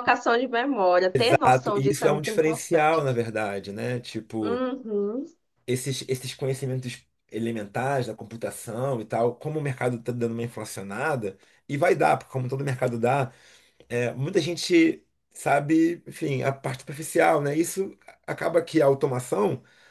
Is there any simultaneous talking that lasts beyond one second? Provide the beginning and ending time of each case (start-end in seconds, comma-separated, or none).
1.1-3.0